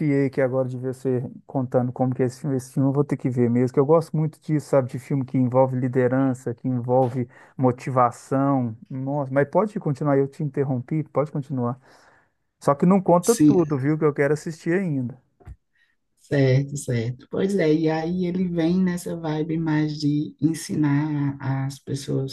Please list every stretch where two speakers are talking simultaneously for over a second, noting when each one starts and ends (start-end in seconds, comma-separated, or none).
none